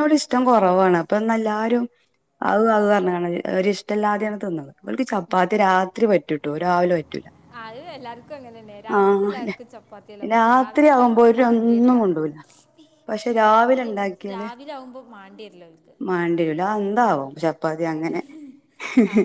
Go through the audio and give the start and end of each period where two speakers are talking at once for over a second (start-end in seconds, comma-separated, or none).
10.3-12.0